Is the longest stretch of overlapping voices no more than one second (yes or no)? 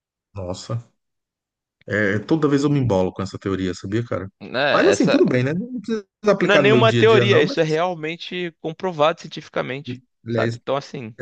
no